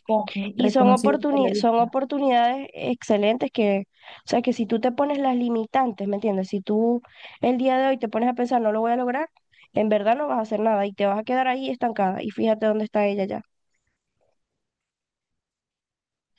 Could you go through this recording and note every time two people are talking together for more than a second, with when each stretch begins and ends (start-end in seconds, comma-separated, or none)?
0.5-1.9